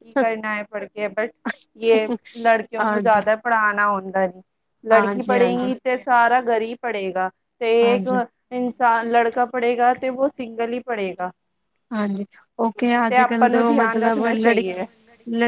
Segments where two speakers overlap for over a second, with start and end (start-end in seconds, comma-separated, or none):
13.5-14.8